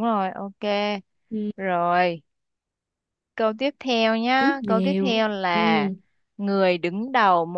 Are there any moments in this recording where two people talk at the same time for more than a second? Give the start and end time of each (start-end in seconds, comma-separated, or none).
4.4-5.9